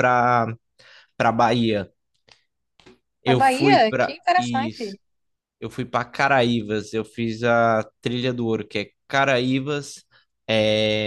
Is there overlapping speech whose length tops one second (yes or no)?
yes